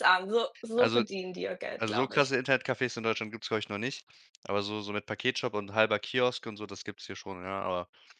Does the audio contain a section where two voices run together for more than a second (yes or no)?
no